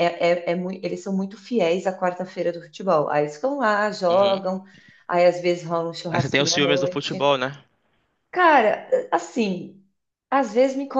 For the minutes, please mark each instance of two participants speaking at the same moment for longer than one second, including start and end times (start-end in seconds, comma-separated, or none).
6.1-7.3